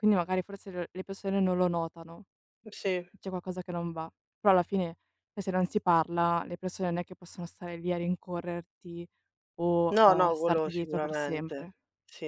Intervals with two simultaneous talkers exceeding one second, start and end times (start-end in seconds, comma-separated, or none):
9.9-11.7